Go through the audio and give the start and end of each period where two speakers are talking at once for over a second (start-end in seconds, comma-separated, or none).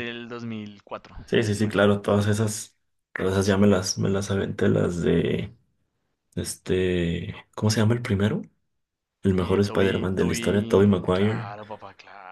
9.4-11.5